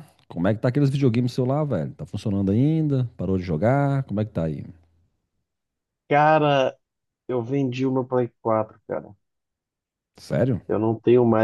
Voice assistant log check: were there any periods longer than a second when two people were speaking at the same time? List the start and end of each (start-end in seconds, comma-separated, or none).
none